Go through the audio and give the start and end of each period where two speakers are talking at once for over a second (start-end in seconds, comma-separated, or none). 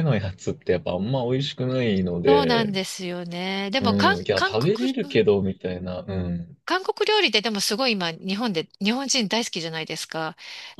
3.8-5.2